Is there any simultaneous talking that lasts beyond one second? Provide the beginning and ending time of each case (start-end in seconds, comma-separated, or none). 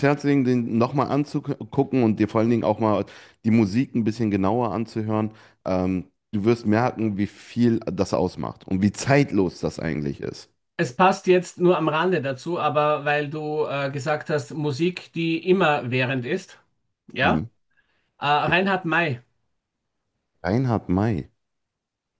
none